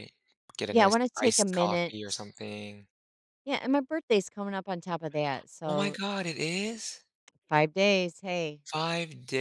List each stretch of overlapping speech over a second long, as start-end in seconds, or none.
0.7-2.3